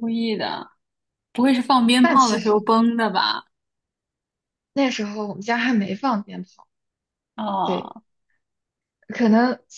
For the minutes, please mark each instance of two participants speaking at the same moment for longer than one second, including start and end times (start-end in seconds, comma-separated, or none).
none